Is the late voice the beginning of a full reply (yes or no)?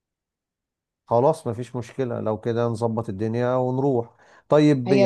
no